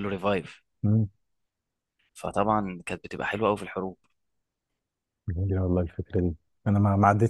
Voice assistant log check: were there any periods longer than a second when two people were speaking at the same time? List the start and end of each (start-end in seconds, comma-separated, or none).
none